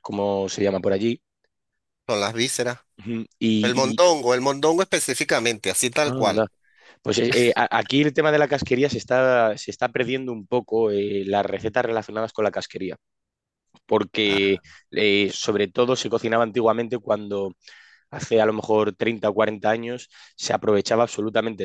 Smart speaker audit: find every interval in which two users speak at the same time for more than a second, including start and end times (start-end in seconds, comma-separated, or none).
none